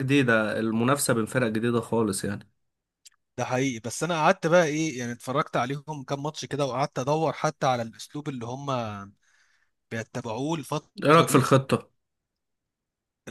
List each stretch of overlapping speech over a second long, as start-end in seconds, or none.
none